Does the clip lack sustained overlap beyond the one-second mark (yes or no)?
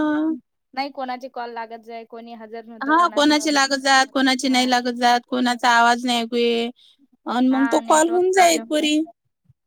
no